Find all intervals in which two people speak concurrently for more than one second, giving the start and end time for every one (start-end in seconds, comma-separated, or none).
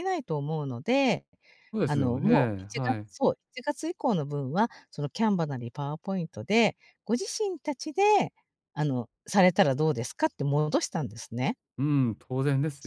1.9-3.1